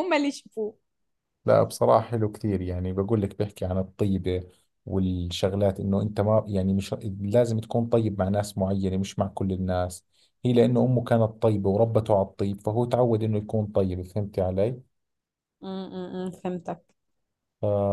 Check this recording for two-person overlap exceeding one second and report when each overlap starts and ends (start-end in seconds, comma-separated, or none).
none